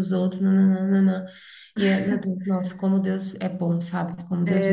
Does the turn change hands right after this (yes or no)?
yes